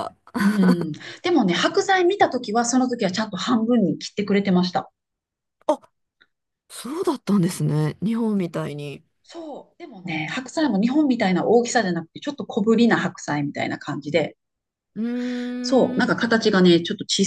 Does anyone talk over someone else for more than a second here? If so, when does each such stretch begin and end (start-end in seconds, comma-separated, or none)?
none